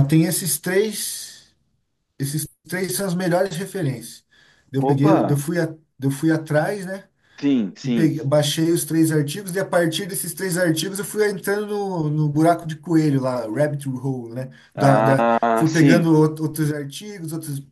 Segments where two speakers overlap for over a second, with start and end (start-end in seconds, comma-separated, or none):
14.8-16.1